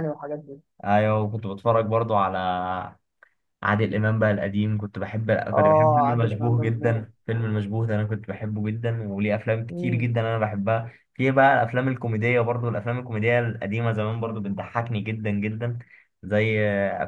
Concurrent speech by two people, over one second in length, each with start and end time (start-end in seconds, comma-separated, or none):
5.5-7.1